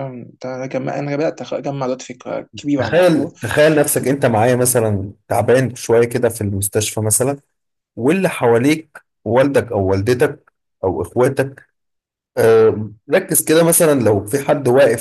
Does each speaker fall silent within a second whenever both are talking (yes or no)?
yes